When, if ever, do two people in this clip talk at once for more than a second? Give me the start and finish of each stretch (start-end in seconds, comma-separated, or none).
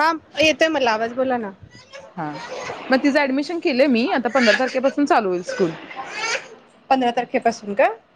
none